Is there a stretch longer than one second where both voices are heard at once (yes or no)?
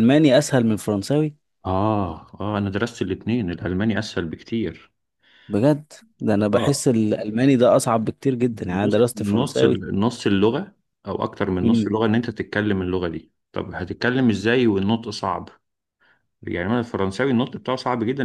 yes